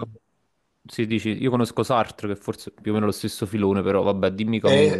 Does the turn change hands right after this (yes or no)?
yes